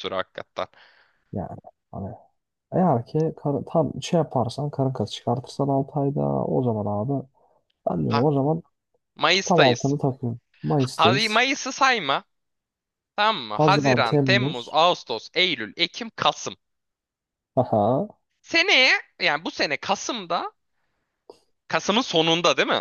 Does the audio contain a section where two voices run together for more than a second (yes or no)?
yes